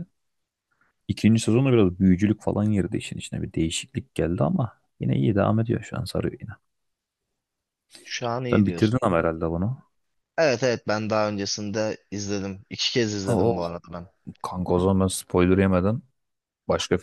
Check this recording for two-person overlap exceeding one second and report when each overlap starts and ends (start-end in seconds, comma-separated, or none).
none